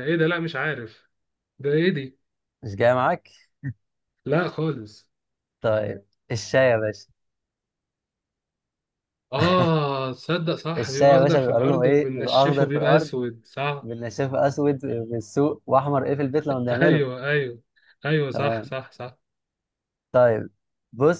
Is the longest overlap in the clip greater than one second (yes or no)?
yes